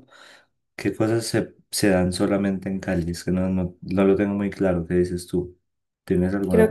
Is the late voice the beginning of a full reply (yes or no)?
yes